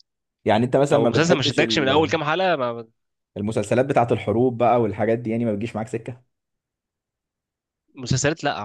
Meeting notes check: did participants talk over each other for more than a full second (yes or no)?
yes